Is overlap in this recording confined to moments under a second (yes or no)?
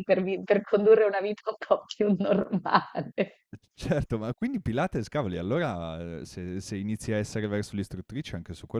yes